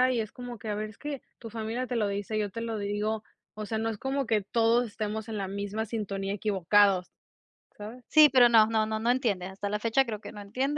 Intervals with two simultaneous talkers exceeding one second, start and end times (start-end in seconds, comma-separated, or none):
none